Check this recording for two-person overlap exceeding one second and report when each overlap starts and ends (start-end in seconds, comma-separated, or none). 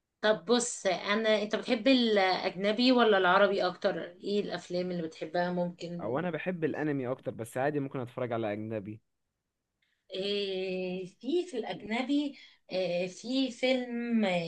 none